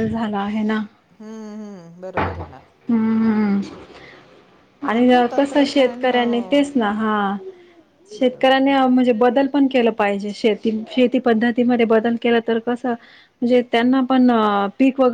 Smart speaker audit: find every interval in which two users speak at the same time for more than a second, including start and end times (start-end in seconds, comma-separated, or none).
4.9-6.7